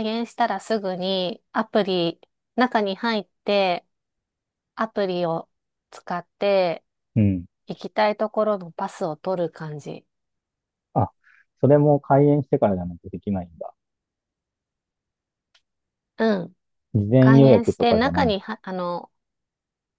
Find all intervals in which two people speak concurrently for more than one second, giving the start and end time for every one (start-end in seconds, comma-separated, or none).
17.2-18.4